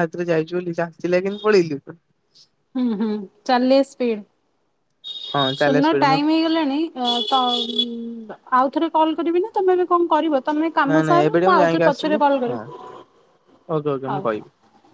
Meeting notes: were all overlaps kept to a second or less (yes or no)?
no